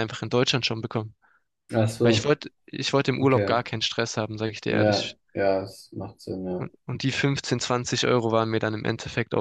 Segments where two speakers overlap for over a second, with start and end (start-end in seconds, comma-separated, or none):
none